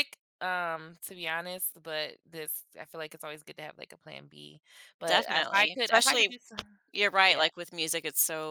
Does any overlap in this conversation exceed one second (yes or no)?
yes